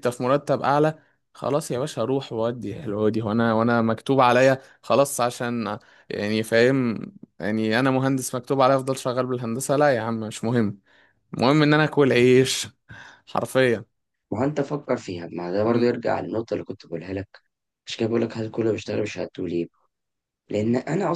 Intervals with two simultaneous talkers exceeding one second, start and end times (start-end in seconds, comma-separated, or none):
none